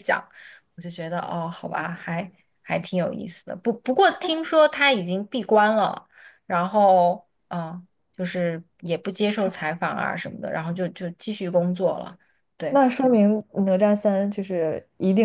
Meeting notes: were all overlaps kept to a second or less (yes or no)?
yes